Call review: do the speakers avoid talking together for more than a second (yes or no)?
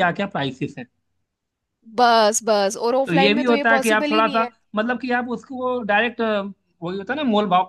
no